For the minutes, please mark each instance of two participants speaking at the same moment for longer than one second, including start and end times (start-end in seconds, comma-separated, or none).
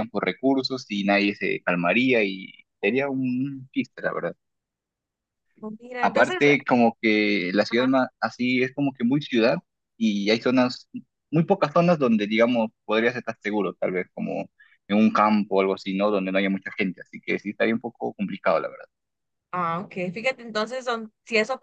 none